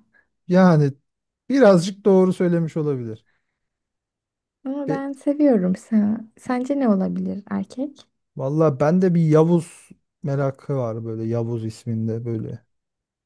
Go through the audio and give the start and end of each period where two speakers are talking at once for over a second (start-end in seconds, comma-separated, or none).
none